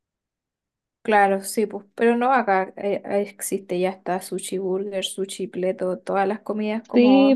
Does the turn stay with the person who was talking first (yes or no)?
no